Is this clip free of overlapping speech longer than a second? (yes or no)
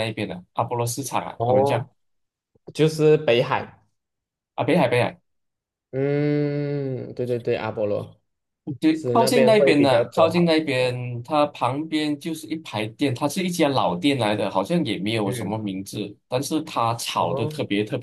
no